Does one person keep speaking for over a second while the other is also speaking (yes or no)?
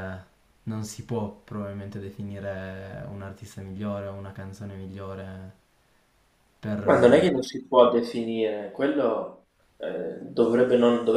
no